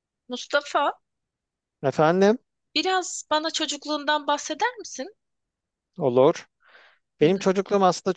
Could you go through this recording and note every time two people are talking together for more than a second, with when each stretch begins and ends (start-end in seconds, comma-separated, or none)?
none